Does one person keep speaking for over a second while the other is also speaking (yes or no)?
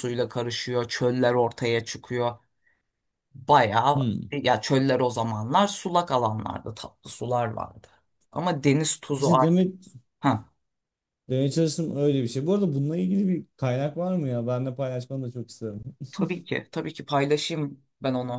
no